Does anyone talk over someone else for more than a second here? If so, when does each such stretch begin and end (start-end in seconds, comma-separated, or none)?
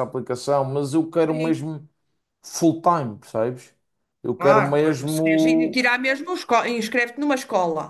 4.4-5.8